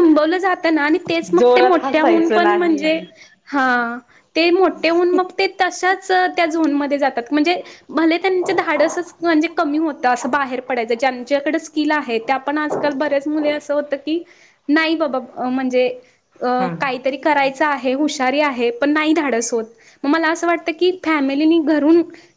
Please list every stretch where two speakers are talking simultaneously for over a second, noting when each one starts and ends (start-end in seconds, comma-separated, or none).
1.4-3.0